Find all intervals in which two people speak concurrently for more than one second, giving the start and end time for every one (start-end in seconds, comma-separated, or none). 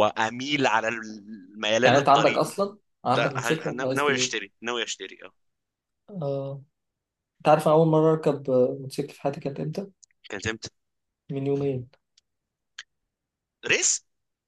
3.1-4.3